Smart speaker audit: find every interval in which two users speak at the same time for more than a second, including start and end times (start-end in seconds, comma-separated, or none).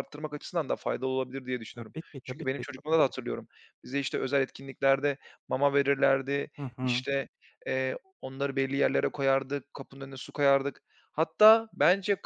1.7-3.4